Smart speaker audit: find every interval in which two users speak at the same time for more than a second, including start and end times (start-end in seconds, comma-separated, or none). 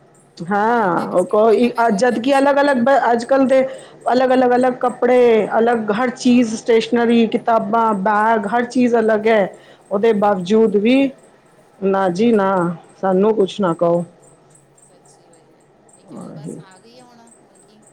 0.6-2.9